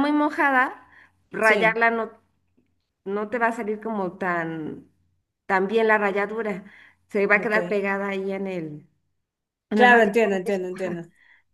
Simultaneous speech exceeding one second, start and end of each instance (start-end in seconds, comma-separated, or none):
9.7-11.0